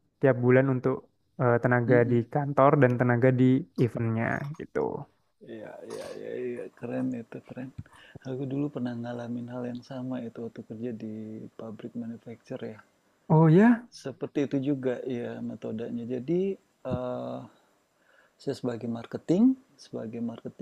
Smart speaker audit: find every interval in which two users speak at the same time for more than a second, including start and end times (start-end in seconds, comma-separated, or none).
none